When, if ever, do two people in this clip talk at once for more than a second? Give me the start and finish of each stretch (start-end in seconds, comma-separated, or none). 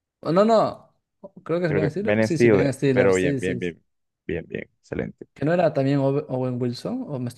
1.6-3.6